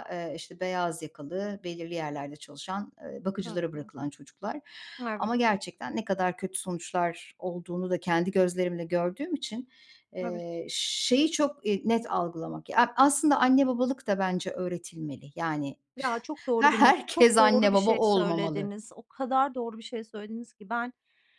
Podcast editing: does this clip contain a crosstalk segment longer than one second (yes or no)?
yes